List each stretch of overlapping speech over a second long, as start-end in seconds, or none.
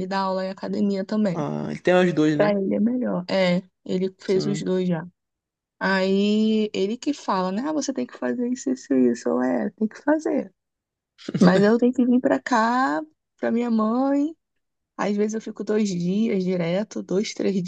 none